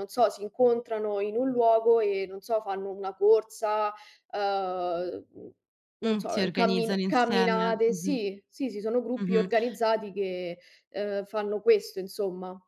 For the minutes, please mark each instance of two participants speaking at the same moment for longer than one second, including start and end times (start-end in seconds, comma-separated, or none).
6.0-8.2